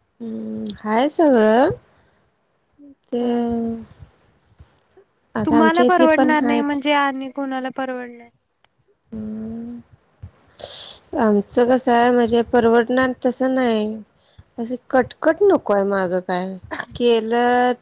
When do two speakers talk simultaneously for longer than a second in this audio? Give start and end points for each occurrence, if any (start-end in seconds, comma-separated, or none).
5.5-6.8